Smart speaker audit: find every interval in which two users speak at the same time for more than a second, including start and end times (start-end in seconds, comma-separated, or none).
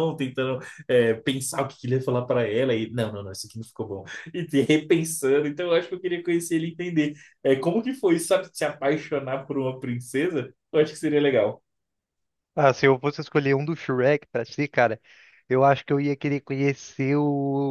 none